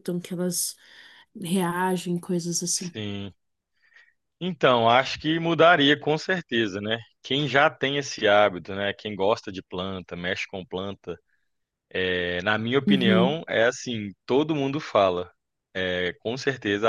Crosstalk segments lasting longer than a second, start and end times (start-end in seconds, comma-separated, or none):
none